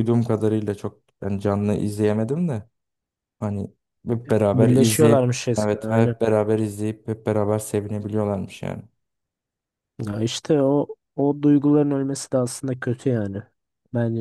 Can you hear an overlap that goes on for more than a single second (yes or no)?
yes